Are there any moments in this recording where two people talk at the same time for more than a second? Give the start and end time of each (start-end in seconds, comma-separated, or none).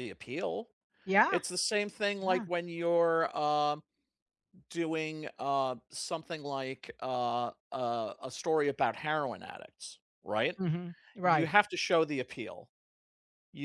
none